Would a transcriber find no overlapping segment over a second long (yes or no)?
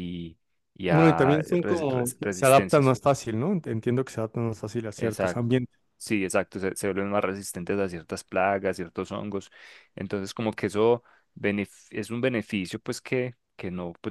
no